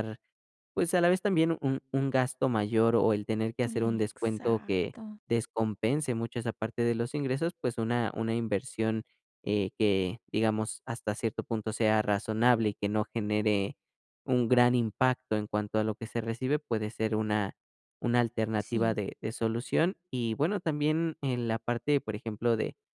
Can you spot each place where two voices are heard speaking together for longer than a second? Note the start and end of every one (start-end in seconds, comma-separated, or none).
3.7-5.0